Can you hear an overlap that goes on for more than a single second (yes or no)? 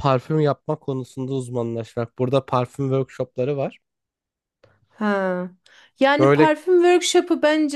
no